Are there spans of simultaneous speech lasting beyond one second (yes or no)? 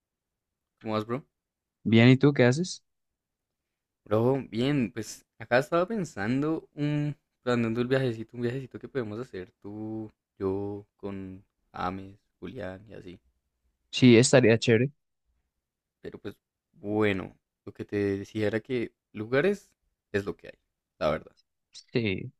no